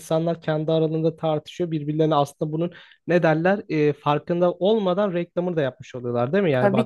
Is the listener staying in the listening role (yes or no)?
no